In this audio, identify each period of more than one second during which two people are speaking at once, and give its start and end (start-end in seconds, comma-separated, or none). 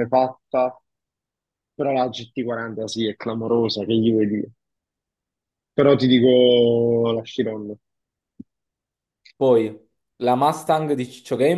none